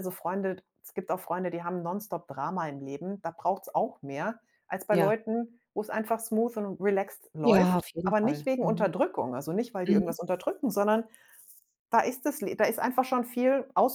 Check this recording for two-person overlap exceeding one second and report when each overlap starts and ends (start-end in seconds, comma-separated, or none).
7.4-8.9